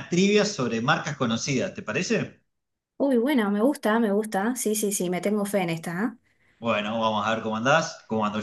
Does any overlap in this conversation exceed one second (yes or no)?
no